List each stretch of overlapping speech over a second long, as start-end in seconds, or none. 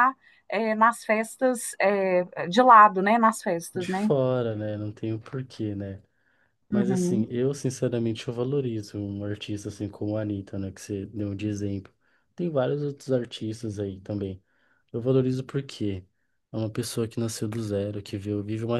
none